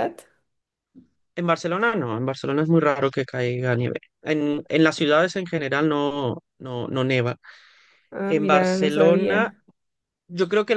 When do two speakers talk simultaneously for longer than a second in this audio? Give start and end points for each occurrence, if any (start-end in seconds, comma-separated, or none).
8.3-9.5